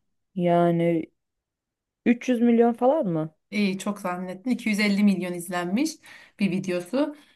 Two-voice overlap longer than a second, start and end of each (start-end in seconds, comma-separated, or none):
none